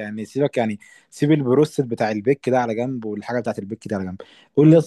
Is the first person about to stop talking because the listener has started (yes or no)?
no